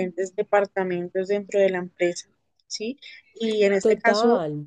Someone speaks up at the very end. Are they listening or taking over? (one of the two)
listening